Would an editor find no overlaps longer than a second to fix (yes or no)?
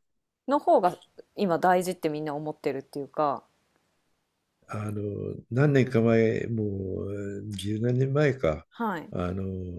yes